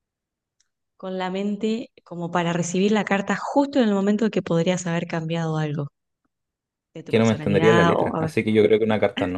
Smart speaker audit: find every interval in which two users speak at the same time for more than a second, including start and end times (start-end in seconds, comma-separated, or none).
7.0-8.3